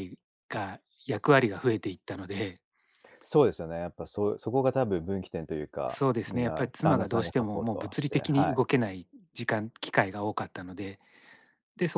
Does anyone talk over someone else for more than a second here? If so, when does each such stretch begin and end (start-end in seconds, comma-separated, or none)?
5.9-8.6